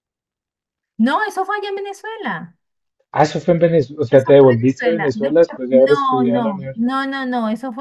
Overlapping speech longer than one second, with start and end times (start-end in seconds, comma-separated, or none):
4.1-6.8